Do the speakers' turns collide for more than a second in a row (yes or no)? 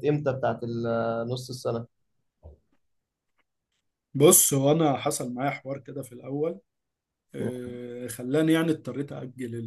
no